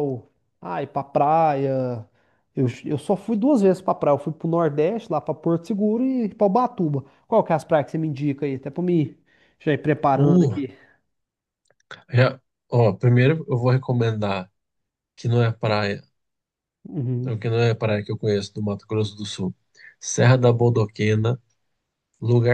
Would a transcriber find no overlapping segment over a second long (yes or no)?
yes